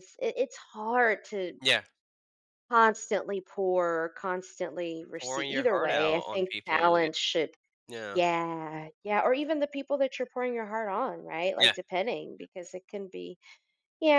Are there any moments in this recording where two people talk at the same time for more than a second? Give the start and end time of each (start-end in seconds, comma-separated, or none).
5.2-7.1